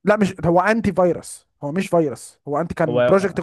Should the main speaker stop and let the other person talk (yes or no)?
no